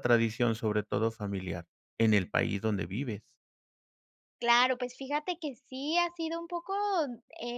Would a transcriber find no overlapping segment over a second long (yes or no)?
yes